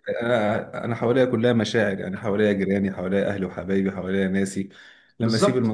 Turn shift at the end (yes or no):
no